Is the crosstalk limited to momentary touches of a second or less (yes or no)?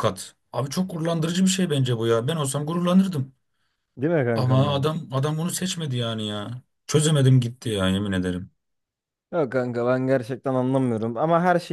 yes